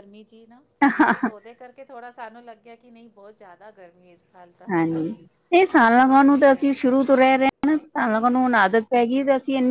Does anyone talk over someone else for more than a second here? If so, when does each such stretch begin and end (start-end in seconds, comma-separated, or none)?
none